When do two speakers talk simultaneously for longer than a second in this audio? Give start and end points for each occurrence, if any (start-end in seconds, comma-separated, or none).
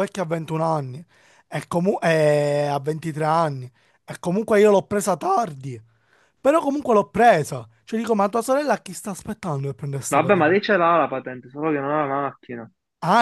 none